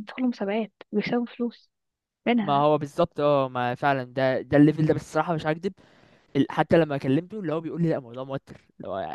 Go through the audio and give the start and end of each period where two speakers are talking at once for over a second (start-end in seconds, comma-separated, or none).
none